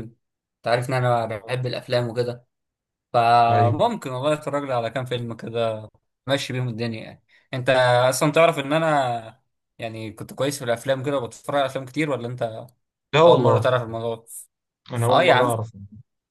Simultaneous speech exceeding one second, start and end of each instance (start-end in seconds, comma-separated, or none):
none